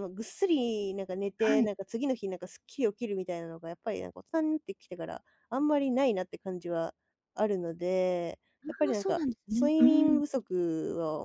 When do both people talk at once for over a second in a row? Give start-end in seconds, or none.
8.6-10.2